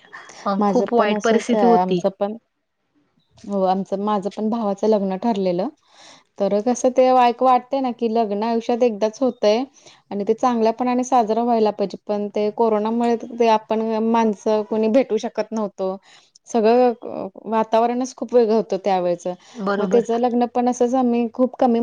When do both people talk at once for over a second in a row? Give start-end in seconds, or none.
0.7-2.0